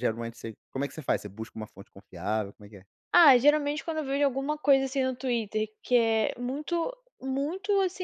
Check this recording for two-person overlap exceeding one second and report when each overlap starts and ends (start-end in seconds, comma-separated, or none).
none